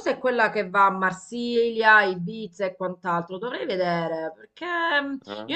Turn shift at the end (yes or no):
no